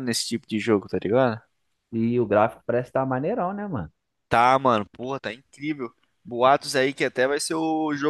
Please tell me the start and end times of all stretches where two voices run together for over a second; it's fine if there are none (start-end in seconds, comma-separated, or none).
none